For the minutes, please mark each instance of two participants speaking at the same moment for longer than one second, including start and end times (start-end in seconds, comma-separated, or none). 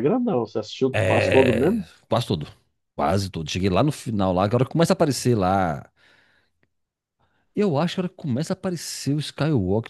none